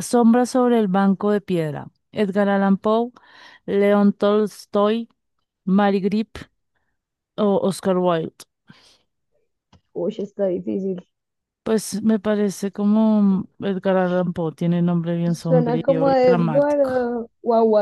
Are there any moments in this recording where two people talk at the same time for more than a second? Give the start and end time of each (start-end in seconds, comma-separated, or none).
15.2-16.9